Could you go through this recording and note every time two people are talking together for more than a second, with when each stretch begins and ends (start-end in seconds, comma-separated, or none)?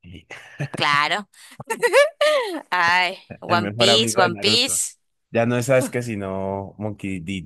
3.5-4.8